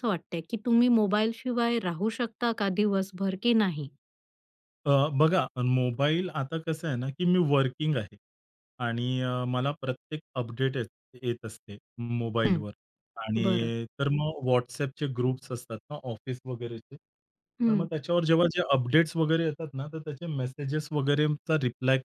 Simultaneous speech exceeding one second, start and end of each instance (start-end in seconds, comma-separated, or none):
none